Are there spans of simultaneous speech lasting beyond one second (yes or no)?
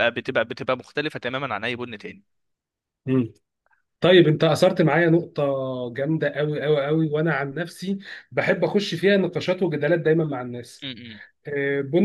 no